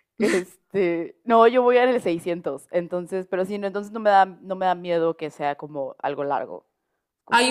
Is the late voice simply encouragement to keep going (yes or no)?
no